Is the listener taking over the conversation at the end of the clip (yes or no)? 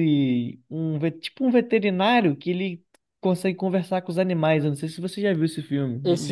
yes